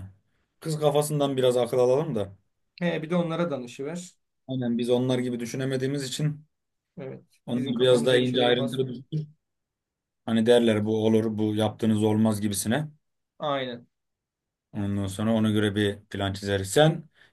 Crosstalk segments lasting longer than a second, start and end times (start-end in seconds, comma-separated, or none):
7.5-8.9